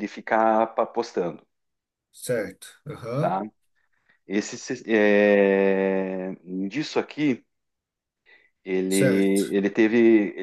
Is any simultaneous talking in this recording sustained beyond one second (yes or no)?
no